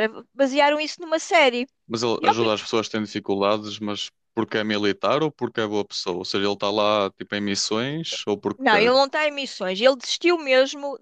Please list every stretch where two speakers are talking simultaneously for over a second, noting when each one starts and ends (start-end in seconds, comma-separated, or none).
none